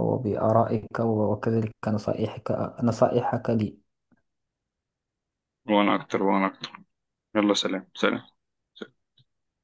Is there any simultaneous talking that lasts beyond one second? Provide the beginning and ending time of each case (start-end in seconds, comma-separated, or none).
none